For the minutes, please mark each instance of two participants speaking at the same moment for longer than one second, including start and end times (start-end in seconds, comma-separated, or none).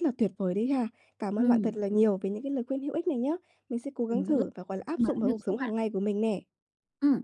4.1-5.7